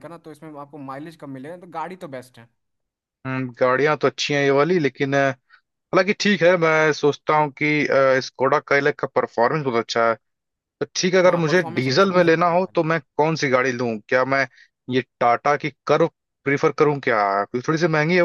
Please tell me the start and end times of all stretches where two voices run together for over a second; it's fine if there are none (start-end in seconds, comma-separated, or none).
11.2-12.8